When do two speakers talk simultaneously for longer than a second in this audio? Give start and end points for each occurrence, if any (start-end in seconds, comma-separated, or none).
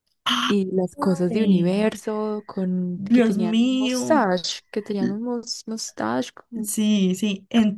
3.0-4.3